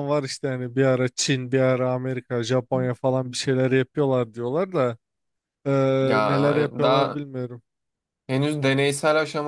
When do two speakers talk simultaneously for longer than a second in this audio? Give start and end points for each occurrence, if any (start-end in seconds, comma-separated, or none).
none